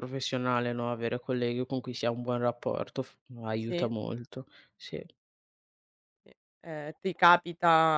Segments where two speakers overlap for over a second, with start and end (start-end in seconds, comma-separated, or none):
none